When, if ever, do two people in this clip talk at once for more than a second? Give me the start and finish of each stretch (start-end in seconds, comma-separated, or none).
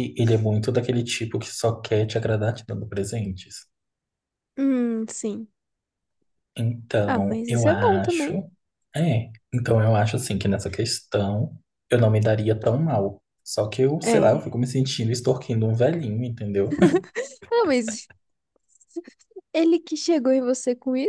7.0-8.3